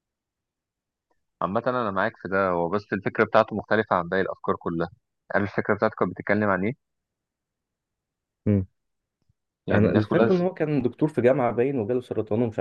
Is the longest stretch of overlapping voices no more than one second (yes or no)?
yes